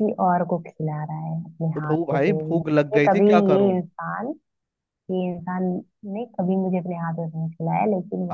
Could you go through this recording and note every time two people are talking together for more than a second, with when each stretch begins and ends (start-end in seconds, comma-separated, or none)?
1.7-3.7